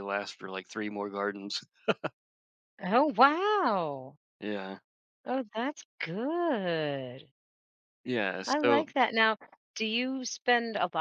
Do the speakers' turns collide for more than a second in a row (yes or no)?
no